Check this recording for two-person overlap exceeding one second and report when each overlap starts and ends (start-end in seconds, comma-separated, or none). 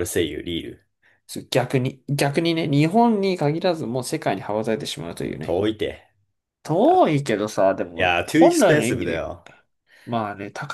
8.0-9.3